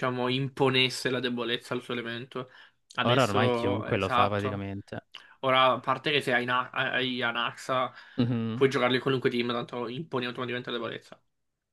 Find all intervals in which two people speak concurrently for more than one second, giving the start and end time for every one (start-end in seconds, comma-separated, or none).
3.0-4.7